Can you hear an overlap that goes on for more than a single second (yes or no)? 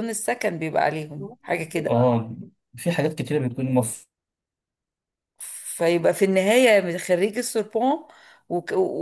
no